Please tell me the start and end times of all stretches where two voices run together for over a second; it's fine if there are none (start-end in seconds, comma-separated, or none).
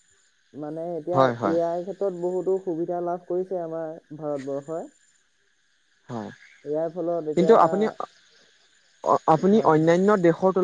none